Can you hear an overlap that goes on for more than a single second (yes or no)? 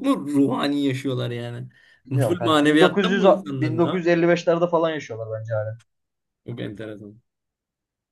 yes